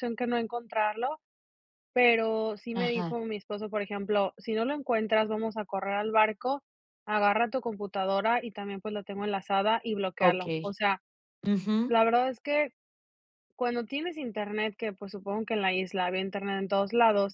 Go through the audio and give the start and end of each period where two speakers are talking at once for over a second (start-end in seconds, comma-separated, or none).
none